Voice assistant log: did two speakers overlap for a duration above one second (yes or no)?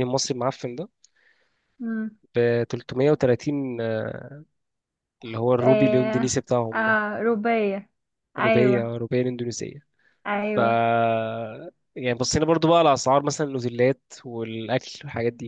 yes